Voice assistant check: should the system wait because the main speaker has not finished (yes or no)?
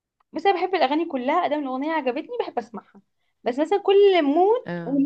yes